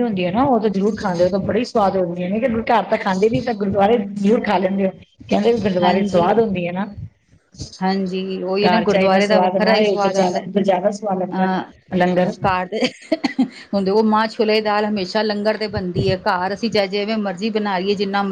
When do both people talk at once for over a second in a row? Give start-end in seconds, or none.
8.7-11.5